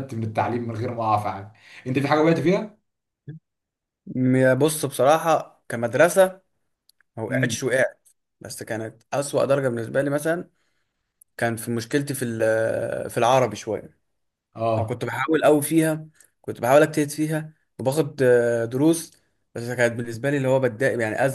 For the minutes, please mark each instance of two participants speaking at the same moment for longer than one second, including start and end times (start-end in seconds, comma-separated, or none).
none